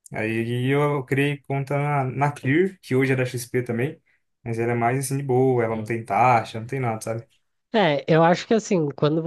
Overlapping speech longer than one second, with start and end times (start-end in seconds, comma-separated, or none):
none